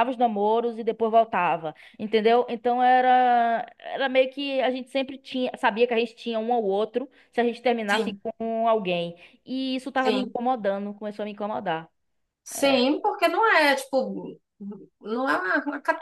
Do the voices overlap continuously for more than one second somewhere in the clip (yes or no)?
no